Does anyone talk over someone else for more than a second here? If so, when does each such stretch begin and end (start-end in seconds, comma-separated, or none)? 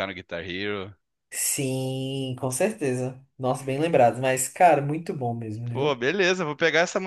none